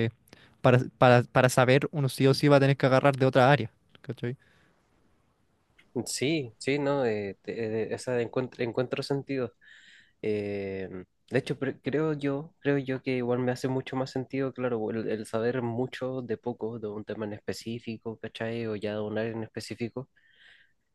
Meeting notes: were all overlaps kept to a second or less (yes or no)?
yes